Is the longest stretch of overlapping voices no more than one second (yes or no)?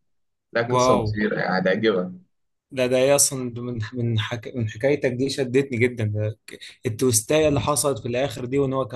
yes